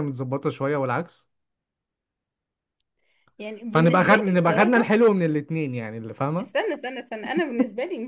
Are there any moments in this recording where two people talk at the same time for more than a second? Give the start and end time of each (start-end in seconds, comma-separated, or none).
3.7-5.0